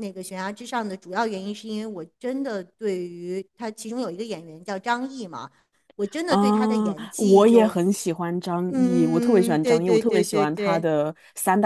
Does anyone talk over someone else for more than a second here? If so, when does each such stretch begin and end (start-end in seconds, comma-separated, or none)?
8.7-10.9